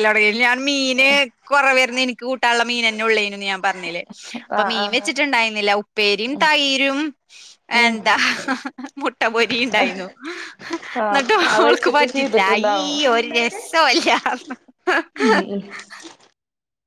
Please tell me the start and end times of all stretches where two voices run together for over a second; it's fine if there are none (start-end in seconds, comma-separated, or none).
11.1-12.9